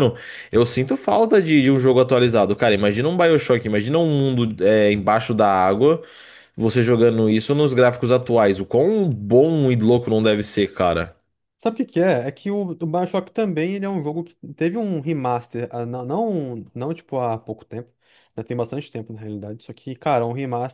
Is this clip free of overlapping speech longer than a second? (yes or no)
yes